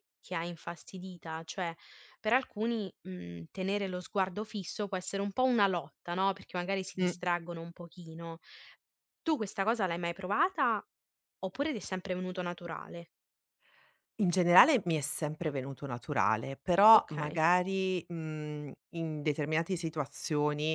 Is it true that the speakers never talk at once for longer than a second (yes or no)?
yes